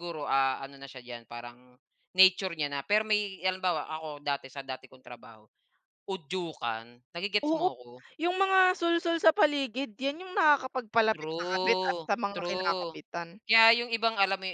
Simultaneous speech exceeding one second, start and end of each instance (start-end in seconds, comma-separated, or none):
11.1-13.0